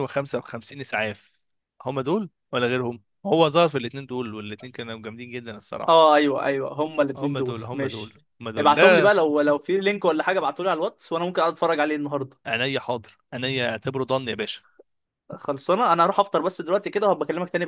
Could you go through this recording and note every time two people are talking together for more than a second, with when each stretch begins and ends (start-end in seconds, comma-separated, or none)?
7.2-9.1